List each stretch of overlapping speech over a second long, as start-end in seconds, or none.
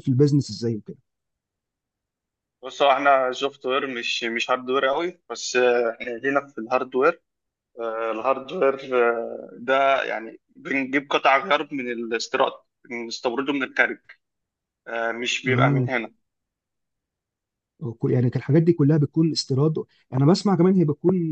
none